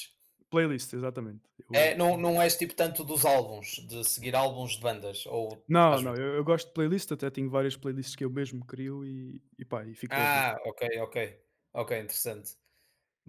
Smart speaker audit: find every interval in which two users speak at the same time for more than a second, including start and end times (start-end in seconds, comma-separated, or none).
none